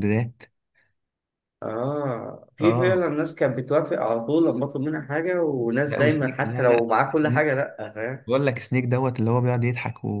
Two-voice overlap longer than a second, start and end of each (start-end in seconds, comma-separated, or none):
5.8-7.4